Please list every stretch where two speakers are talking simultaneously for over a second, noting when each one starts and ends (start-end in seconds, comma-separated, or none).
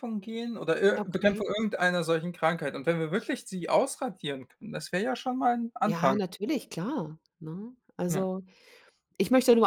none